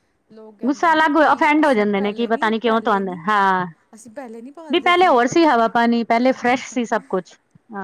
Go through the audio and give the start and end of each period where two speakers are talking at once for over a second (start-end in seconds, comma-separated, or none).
0.7-3.2